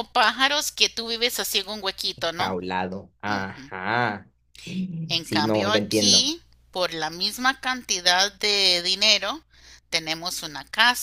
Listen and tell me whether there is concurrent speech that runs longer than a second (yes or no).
yes